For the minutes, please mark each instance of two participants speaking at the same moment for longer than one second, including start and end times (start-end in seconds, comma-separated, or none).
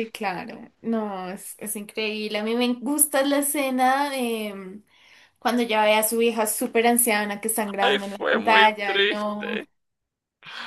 7.8-9.7